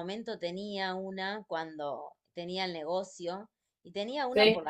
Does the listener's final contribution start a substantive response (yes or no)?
no